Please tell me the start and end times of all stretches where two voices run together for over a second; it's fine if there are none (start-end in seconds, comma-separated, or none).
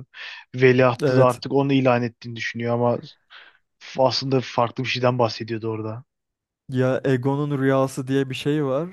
none